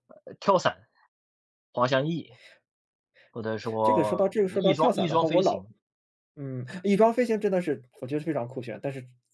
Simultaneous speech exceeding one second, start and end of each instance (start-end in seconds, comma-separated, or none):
3.8-5.7